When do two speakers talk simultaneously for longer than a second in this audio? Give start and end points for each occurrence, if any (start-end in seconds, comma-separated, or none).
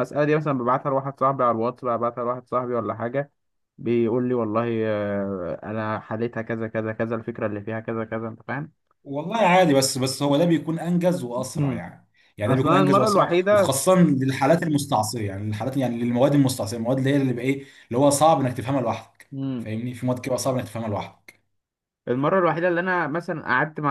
12.5-13.8